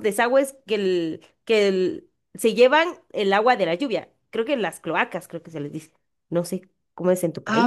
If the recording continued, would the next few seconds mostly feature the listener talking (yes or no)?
yes